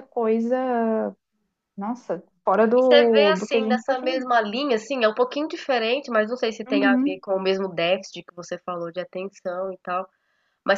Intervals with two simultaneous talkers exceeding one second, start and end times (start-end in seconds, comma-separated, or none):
2.8-4.0